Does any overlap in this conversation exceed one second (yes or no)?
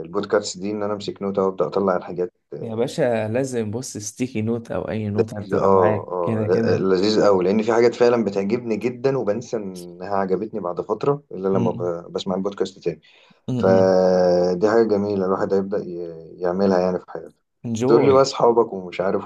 yes